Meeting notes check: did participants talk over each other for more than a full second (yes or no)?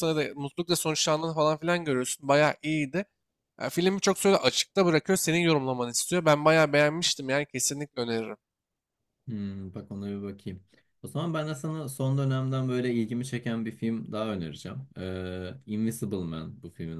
no